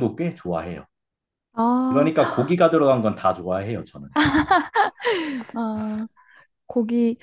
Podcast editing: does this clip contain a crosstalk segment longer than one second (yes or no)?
no